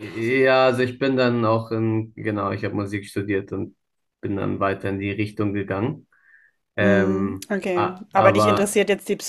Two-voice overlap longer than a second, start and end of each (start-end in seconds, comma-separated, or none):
6.8-8.8